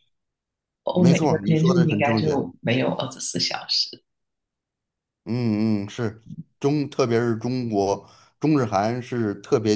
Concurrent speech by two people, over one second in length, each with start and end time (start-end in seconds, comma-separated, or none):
0.9-2.4